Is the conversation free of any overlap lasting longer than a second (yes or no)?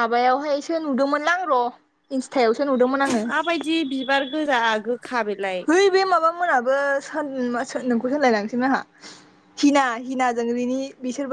yes